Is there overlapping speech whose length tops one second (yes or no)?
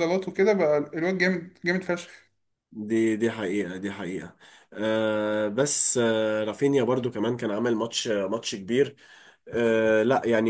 no